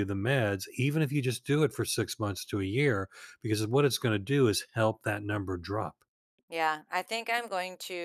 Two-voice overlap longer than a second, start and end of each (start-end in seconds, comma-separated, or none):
none